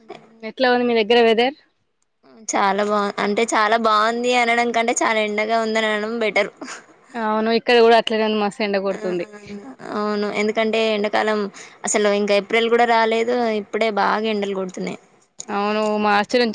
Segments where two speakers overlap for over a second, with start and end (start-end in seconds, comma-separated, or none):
none